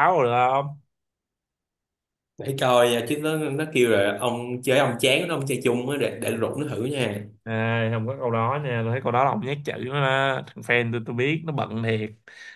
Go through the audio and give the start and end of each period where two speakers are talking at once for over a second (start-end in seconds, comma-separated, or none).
none